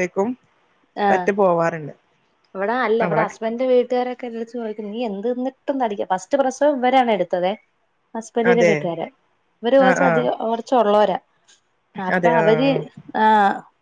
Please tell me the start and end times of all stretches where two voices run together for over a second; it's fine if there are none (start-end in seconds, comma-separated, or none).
none